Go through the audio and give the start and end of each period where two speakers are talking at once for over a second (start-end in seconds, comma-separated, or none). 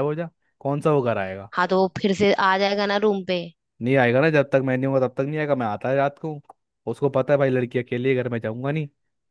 none